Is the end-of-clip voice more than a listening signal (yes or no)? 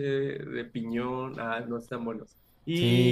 no